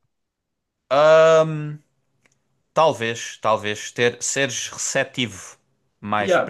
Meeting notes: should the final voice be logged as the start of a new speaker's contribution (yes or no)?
yes